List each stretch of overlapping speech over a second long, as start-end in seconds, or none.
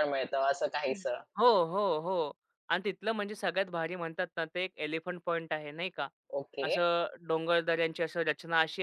none